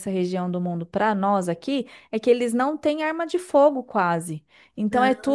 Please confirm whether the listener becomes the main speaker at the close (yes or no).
no